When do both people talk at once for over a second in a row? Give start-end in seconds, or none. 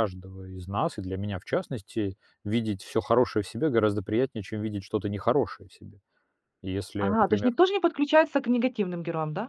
none